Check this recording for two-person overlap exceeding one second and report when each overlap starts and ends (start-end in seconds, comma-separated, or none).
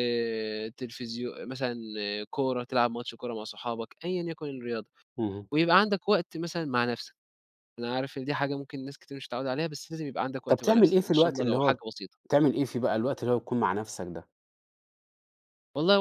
10.5-11.8